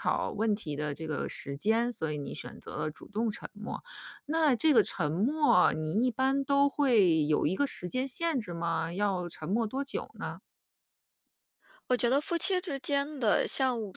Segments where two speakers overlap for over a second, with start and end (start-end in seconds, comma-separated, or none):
none